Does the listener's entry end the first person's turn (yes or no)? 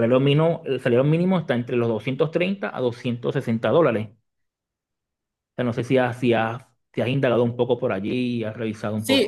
yes